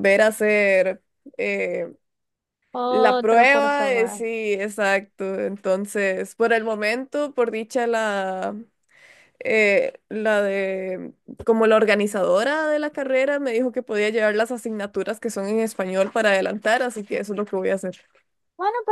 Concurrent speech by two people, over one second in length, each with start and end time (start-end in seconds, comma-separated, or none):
2.9-4.2